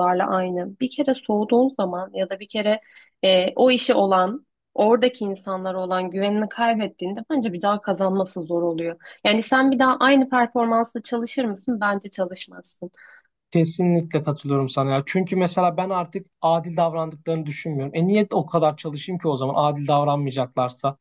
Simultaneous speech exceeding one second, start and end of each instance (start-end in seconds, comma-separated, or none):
none